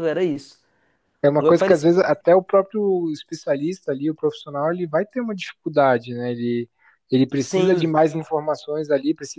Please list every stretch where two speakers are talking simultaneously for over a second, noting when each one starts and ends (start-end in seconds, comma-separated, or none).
none